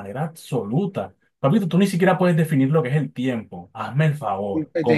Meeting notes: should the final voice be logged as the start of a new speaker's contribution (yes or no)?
yes